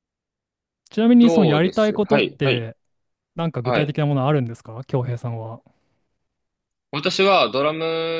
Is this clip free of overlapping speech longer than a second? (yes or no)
no